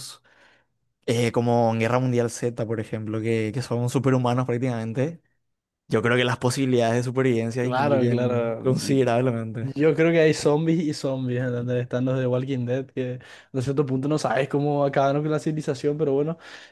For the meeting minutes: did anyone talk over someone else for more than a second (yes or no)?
yes